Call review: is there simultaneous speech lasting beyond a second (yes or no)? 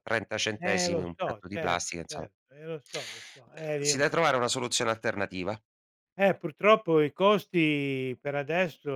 yes